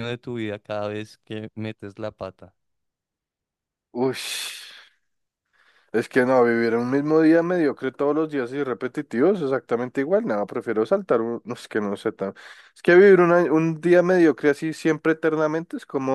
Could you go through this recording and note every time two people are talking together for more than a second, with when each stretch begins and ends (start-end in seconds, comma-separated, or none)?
none